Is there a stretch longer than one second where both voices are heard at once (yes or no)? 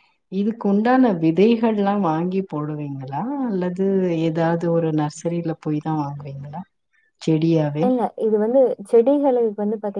no